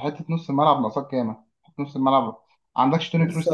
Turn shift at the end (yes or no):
yes